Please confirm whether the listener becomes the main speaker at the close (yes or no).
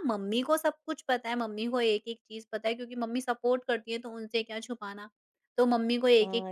yes